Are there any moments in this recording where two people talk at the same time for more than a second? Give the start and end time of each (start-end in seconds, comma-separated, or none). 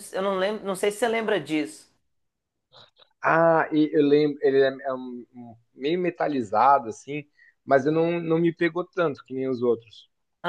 none